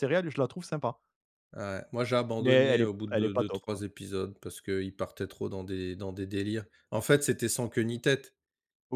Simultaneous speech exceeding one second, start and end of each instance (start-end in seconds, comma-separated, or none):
2.4-3.8